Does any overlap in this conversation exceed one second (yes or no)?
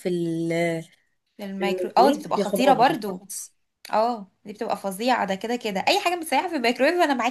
yes